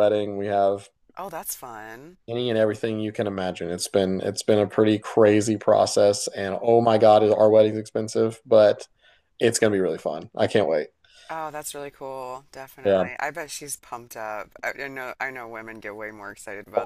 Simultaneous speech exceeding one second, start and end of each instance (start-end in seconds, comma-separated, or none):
none